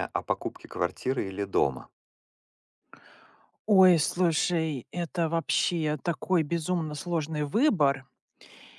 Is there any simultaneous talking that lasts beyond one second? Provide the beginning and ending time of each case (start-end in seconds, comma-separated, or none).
none